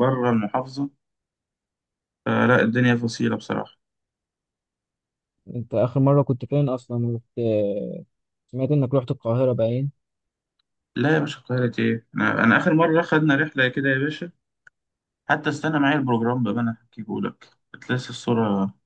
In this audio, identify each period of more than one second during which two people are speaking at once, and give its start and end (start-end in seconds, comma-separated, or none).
none